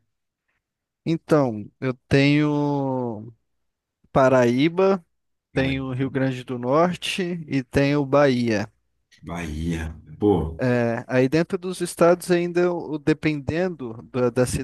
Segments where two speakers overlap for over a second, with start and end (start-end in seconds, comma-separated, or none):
none